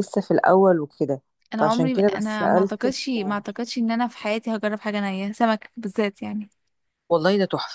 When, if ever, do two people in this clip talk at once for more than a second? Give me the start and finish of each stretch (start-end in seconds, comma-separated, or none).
1.6-3.0